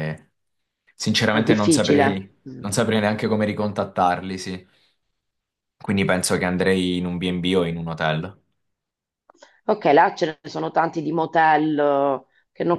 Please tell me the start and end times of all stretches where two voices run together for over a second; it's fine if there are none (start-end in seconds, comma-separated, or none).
1.3-2.6